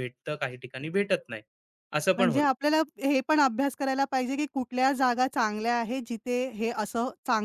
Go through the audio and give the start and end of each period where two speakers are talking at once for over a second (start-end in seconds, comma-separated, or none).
none